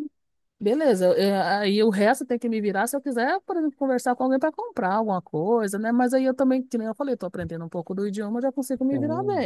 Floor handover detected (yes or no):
yes